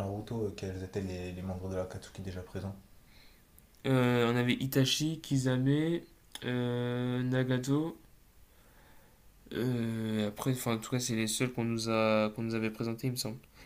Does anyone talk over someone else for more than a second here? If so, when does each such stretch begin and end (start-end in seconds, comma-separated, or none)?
none